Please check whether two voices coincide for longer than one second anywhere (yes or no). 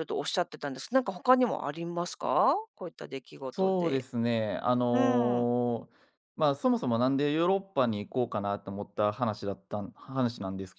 no